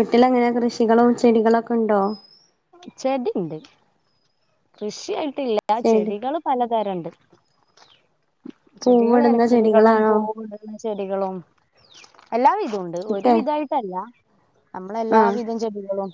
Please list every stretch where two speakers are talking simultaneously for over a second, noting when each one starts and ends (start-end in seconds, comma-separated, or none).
8.8-10.1